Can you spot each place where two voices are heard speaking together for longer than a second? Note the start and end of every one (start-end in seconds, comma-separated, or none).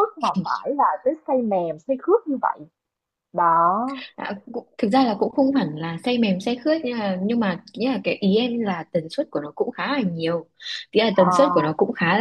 none